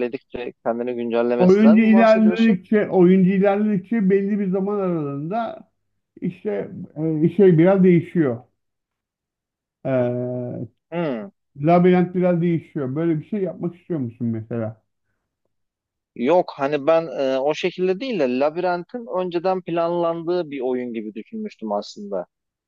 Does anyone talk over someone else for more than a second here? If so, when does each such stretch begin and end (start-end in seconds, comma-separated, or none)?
1.4-2.6